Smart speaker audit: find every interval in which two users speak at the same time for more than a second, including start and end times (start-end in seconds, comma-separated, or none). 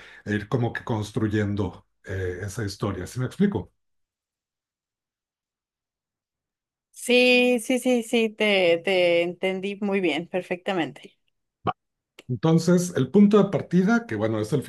none